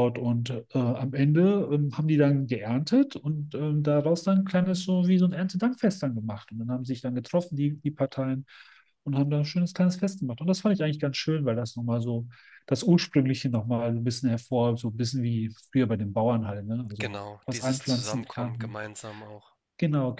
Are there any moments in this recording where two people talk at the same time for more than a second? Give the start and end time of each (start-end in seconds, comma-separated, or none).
17.0-18.8